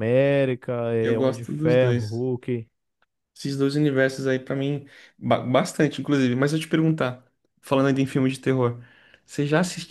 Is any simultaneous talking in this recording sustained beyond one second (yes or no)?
yes